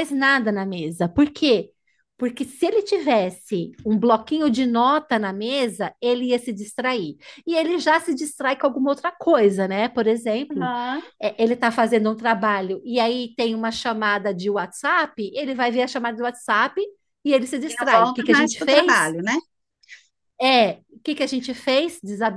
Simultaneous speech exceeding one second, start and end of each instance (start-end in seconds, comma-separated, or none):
17.7-19.2